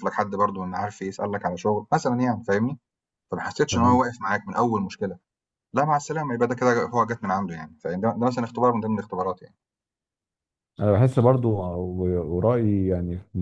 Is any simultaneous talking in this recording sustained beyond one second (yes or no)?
no